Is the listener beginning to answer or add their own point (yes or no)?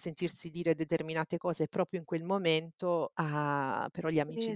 yes